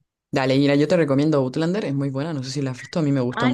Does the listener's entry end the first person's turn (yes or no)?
yes